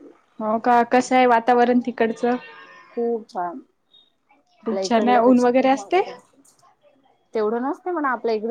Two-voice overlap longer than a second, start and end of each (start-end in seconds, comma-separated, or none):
4.7-6.0